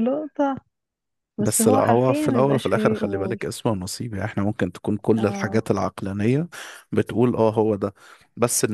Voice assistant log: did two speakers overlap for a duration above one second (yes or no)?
yes